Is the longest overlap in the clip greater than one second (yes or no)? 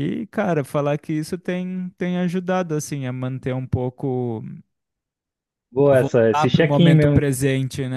yes